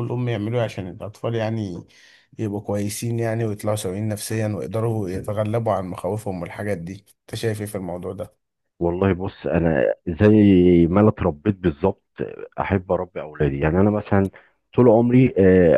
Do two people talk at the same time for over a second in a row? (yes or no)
no